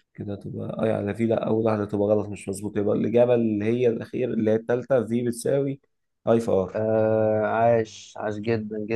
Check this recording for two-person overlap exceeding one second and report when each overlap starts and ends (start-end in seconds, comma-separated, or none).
none